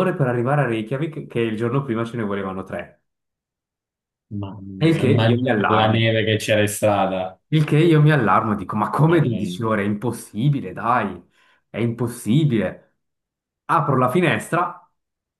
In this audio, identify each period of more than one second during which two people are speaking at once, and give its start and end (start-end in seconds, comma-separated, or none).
4.8-6.1